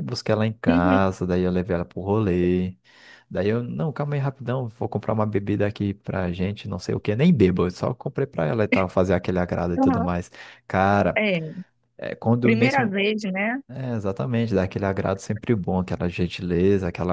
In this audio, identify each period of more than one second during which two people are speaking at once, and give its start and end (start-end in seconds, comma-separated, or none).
none